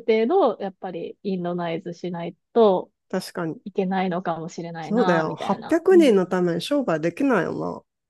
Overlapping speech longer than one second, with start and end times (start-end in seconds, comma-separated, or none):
4.8-6.1